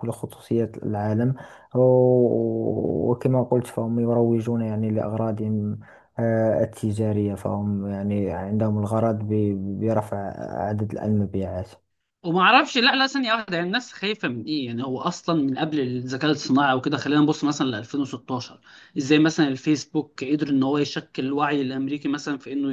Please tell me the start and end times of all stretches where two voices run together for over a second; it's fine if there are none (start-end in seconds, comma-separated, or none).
none